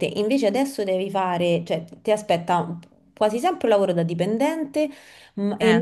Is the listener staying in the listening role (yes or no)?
yes